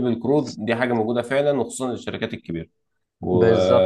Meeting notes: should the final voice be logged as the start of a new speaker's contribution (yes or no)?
no